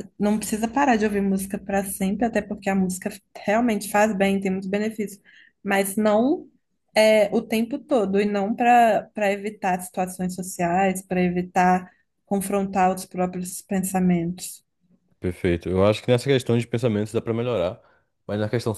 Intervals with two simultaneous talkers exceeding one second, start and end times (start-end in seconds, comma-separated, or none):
none